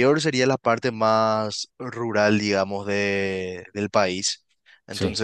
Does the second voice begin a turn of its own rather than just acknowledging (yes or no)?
no